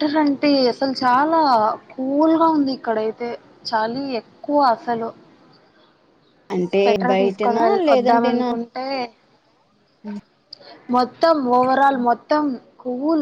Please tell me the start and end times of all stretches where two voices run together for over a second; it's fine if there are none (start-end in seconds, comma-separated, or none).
6.7-8.5